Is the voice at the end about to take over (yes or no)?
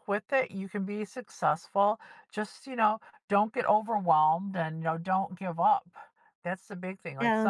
no